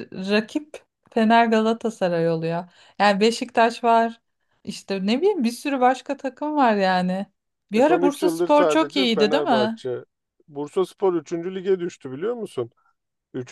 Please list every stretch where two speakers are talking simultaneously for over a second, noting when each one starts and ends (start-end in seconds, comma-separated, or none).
7.8-9.8